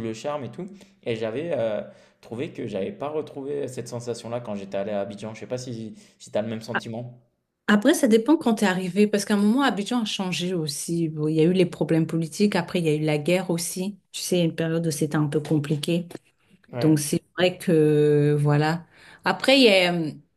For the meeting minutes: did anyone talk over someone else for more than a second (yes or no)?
no